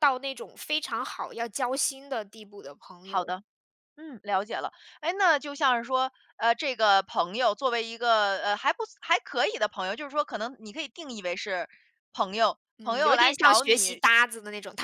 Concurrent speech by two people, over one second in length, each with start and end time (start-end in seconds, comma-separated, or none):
12.8-14.0